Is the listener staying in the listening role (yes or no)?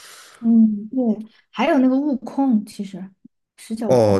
no